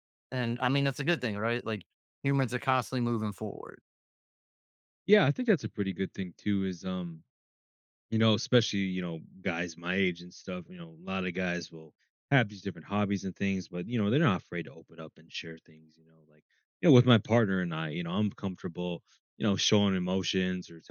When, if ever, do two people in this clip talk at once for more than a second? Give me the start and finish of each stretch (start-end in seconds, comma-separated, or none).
none